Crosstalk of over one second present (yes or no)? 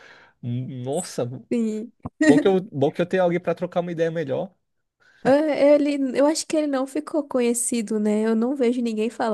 no